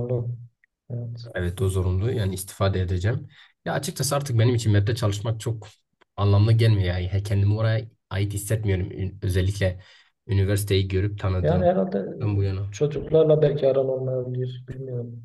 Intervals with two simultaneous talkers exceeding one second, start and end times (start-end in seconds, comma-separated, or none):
none